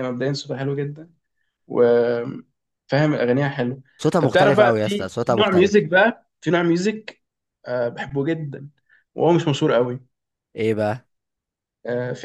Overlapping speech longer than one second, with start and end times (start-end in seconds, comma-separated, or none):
4.2-5.7